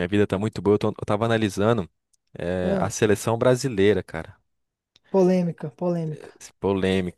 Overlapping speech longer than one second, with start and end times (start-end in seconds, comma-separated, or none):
none